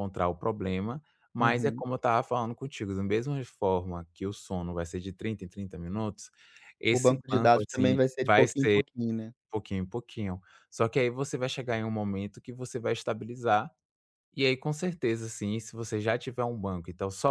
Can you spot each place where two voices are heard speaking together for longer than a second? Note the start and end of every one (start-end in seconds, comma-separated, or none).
6.9-8.8